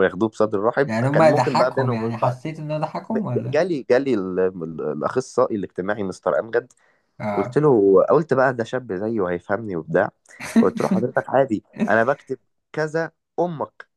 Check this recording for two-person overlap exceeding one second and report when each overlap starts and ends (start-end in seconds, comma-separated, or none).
0.9-2.4